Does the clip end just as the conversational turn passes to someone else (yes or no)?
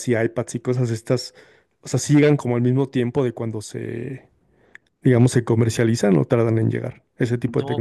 yes